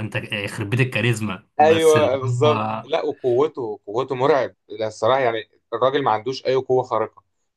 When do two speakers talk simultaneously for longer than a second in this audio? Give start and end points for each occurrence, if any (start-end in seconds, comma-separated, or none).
1.6-2.9